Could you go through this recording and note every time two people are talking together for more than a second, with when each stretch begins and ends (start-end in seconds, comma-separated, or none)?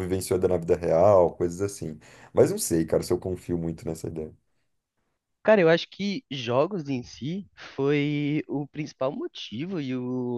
none